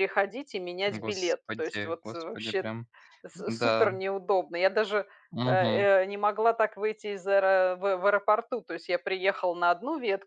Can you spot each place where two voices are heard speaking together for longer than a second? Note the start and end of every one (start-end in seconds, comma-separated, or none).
0.9-2.6